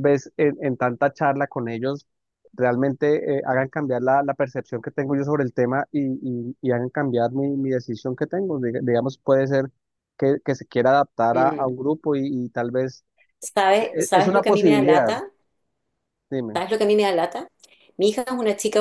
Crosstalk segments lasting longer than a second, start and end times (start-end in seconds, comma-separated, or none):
13.7-15.1